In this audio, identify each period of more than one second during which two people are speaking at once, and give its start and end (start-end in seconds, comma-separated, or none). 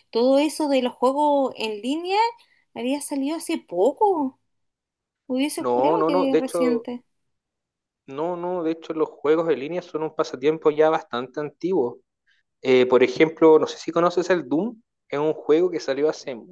5.6-6.9